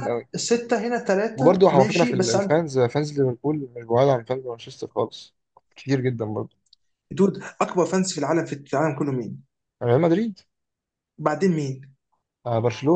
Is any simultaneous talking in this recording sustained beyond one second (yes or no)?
yes